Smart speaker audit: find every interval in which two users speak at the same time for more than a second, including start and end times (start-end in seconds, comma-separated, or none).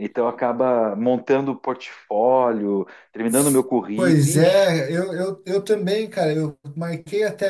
3.3-4.7